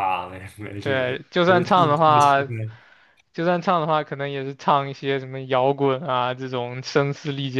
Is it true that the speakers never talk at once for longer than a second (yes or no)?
no